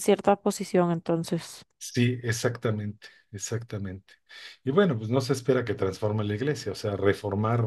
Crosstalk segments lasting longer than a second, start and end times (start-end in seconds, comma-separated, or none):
none